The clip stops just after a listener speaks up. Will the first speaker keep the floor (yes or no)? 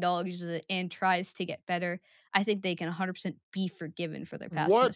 no